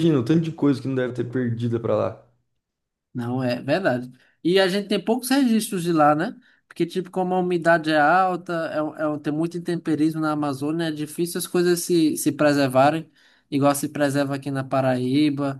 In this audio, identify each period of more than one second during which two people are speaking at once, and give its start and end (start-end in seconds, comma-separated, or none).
none